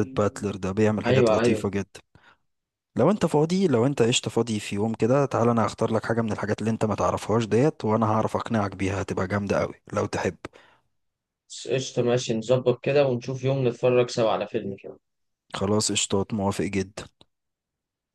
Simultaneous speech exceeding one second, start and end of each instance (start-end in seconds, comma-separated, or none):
none